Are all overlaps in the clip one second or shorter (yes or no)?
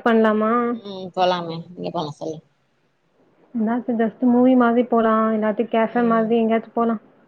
yes